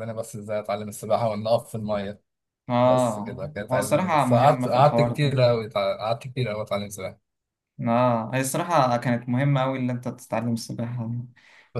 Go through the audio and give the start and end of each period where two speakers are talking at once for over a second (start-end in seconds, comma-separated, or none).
2.8-5.4